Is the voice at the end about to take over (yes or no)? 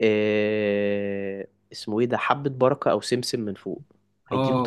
yes